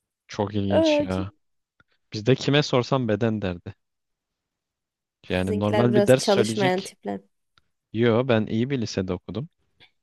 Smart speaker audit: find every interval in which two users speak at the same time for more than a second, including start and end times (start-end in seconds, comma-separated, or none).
5.3-6.9